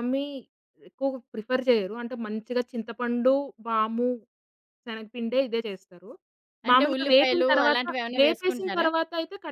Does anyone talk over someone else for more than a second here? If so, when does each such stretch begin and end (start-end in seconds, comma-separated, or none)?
6.7-8.9